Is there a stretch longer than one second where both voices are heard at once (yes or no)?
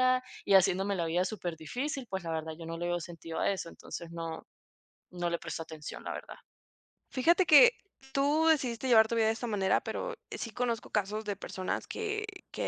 no